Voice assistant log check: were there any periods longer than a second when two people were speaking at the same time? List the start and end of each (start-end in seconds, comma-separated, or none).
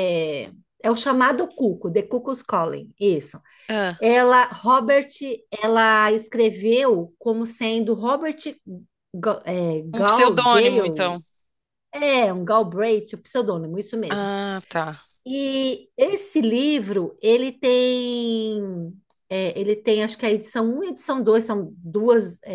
9.9-11.2